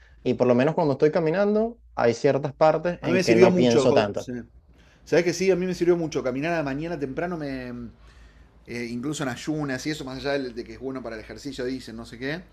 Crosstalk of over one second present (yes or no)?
yes